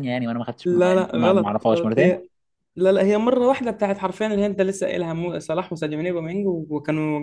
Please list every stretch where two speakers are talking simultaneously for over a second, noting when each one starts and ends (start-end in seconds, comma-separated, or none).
0.7-2.2